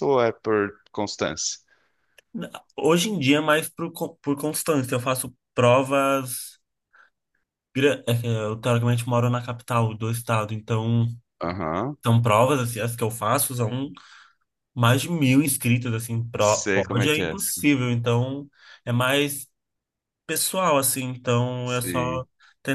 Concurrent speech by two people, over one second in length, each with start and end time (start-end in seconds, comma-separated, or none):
16.4-17.6